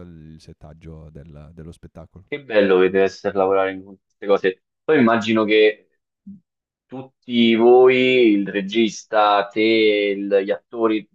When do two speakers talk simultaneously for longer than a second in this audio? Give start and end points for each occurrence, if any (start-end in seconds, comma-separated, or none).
none